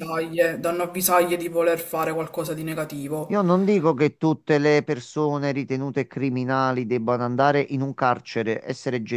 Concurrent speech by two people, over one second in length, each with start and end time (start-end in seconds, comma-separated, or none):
none